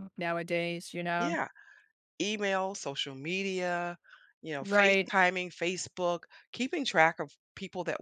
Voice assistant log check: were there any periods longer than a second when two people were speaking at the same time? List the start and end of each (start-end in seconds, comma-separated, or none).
none